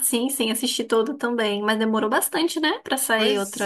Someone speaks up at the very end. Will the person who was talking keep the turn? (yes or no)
no